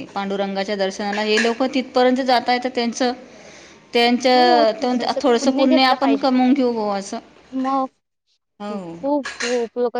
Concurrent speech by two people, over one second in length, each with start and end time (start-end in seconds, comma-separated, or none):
4.3-6.2